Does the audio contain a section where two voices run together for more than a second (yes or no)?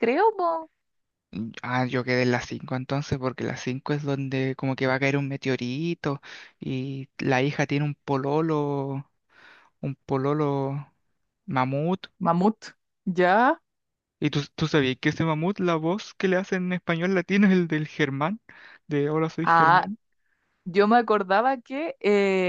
no